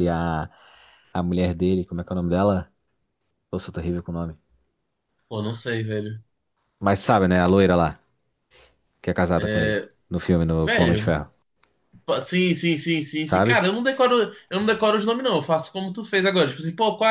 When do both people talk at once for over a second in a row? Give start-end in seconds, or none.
none